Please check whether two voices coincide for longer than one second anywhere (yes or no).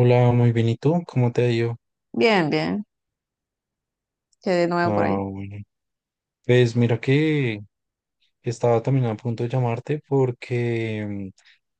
no